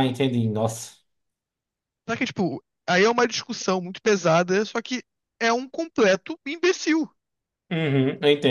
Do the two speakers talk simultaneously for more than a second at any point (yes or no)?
no